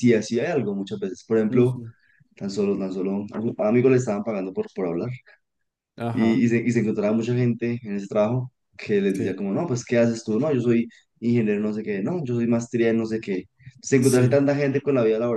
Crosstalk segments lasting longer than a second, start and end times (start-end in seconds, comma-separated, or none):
none